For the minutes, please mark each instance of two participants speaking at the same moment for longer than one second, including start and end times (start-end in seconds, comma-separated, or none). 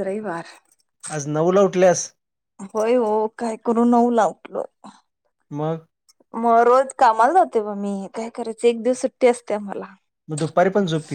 none